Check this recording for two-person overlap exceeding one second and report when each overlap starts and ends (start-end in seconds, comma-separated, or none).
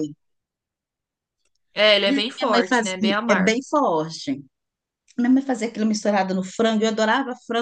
2.0-3.6